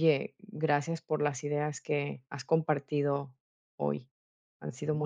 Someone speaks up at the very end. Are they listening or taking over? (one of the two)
taking over